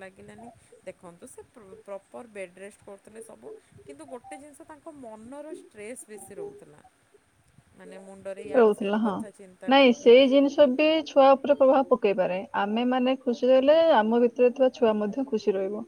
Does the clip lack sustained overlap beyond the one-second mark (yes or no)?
yes